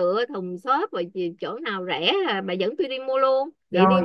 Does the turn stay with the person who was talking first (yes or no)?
no